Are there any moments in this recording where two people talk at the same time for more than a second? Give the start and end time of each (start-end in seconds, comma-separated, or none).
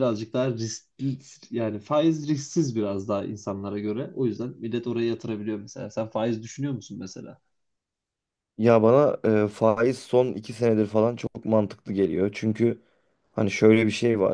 none